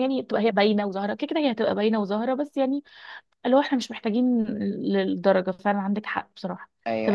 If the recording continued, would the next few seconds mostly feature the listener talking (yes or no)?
yes